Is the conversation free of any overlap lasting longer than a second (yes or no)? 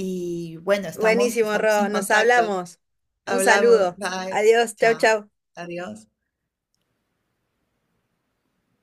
no